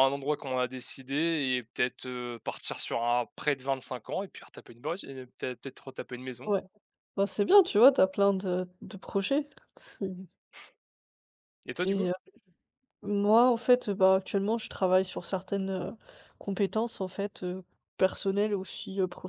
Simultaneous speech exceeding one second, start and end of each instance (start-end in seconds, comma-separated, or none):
none